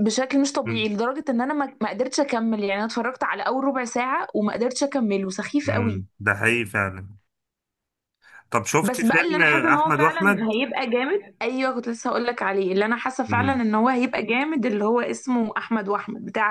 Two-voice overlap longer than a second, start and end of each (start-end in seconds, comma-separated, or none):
8.8-10.5